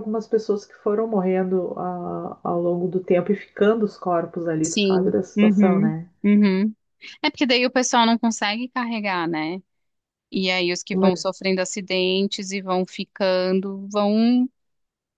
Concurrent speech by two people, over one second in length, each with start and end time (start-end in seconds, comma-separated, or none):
4.6-6.1